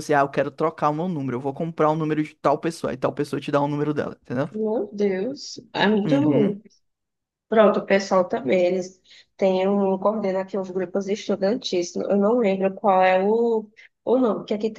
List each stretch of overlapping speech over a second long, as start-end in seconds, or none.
none